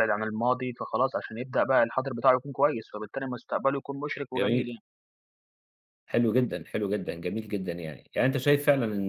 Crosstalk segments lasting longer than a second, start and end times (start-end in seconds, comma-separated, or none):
none